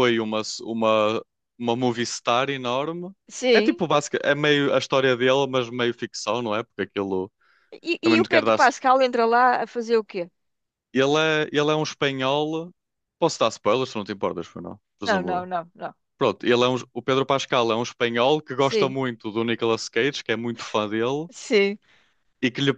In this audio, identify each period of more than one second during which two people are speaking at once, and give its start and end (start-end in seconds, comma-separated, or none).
none